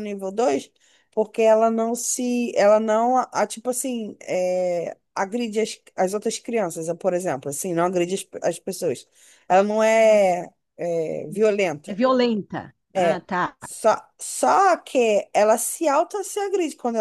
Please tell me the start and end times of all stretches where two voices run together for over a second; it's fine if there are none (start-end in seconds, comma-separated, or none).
none